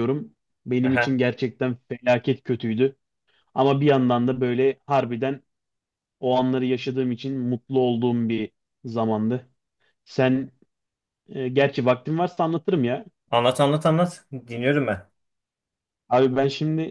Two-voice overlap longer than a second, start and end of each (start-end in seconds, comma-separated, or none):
none